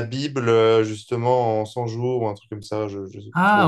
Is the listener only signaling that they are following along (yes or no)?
no